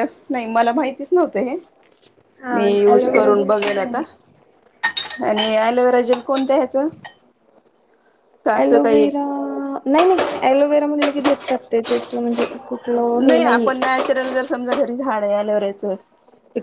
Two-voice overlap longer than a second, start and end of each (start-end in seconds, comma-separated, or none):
2.5-4.0